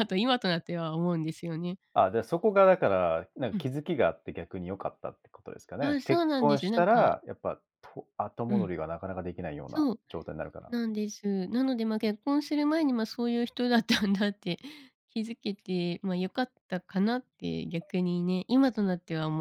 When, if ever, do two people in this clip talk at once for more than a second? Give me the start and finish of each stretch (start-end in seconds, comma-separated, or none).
5.8-7.1